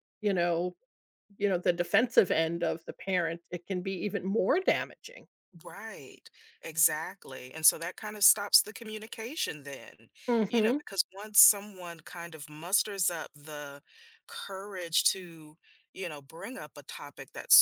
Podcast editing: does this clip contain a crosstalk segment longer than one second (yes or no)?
no